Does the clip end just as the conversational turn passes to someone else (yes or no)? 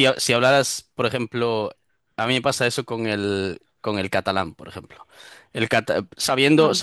no